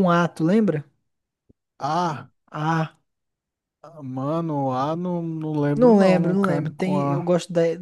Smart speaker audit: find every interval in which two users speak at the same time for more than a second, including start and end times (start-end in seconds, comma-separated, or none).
5.8-7.3